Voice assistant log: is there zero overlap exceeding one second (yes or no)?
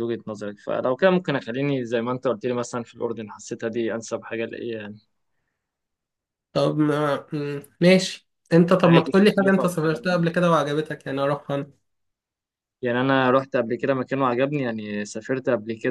no